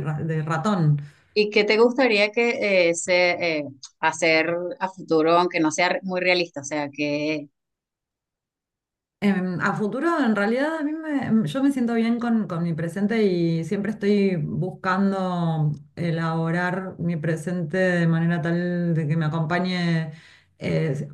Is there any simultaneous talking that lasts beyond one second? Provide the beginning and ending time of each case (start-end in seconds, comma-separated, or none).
none